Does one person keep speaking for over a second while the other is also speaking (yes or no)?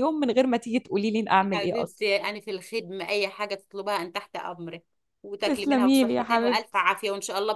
yes